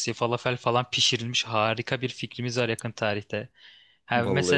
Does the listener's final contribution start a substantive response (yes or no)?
no